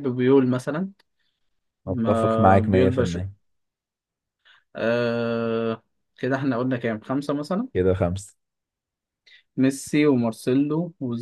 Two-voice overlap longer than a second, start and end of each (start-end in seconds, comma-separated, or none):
1.9-3.2